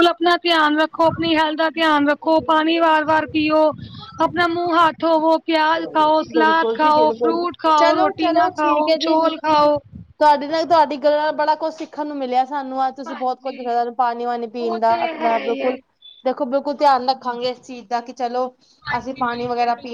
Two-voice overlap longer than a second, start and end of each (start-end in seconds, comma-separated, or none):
6.3-9.2